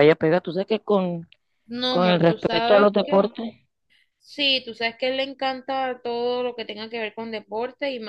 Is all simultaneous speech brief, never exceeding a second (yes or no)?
no